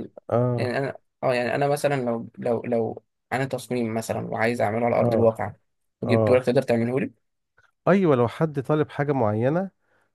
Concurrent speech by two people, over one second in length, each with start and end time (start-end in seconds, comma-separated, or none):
none